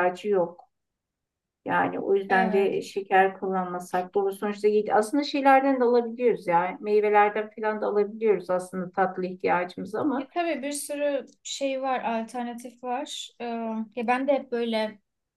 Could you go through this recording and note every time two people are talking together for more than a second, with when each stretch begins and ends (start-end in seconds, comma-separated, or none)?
none